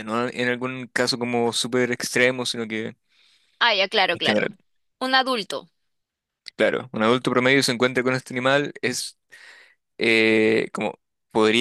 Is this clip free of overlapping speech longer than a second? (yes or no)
yes